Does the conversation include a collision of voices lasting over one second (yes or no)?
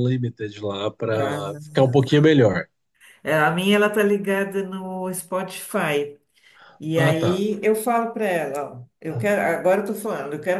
no